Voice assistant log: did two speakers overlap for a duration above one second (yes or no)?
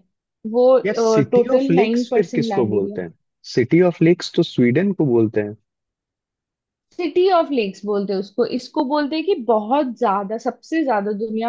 yes